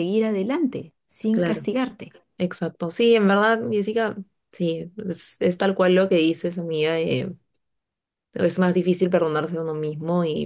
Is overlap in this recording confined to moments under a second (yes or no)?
yes